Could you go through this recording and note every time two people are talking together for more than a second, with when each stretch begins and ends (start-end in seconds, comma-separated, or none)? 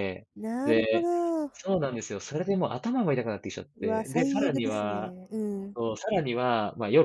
3.8-5.1